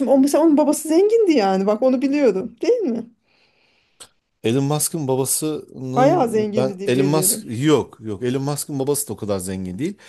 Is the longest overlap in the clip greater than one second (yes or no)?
yes